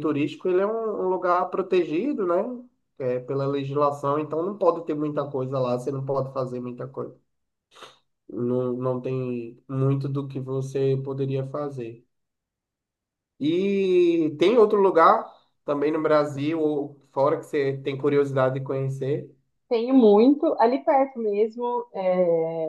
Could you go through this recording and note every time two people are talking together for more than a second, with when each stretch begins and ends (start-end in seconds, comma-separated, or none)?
none